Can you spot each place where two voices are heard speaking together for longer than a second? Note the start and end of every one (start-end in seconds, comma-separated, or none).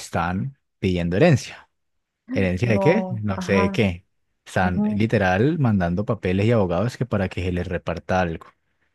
2.6-3.9